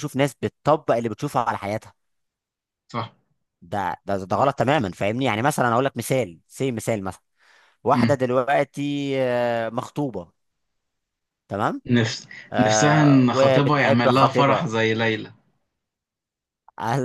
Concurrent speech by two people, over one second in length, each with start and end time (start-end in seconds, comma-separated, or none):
12.5-14.7